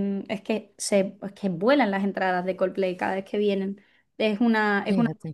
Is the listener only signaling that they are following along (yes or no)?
yes